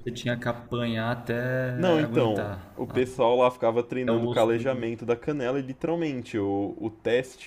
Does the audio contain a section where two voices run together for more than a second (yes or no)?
yes